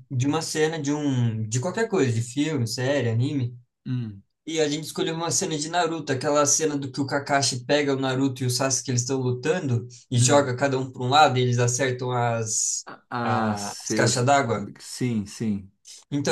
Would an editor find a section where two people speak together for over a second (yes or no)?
yes